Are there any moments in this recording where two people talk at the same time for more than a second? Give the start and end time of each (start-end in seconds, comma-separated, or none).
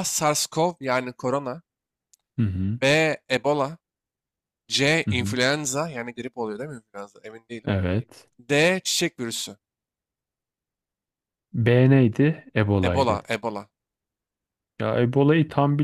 none